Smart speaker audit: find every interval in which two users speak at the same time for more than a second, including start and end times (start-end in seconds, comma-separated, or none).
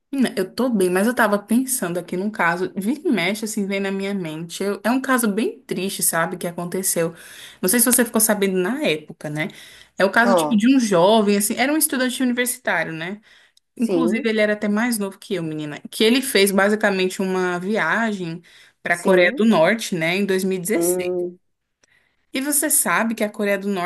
none